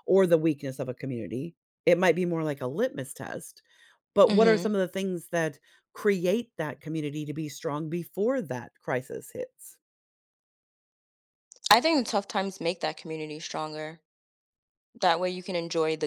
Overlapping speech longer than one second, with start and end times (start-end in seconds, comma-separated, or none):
none